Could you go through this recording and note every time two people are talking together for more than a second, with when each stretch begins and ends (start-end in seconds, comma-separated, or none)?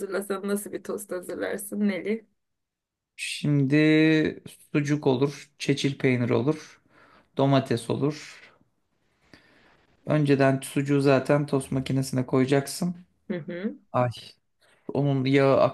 none